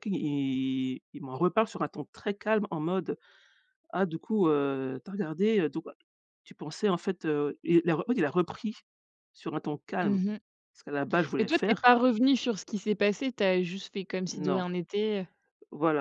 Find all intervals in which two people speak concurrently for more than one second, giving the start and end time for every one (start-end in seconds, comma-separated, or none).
none